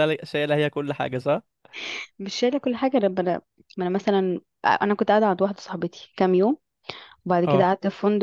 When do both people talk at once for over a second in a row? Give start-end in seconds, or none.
none